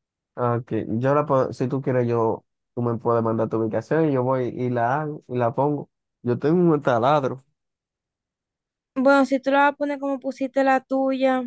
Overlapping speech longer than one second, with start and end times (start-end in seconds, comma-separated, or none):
none